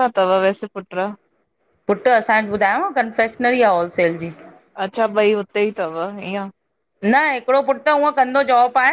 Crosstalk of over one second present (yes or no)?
no